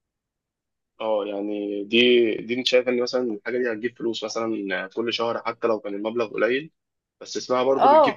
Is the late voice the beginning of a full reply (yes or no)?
yes